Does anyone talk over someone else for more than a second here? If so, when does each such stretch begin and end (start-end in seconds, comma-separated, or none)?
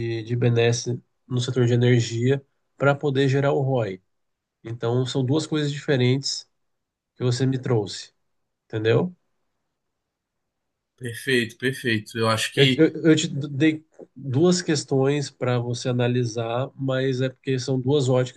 none